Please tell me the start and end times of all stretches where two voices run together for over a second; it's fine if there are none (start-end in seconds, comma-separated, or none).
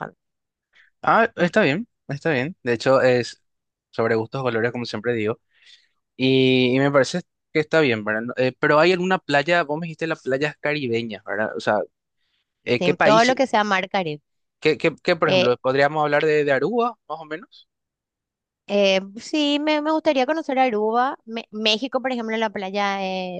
none